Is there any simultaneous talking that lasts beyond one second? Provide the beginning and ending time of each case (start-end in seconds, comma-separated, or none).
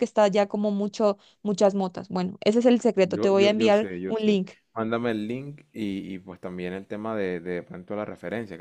3.0-4.5